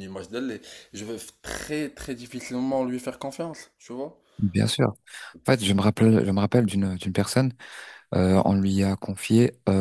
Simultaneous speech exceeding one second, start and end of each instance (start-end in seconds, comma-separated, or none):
none